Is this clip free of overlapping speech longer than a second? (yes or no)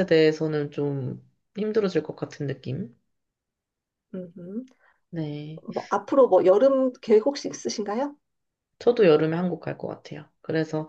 yes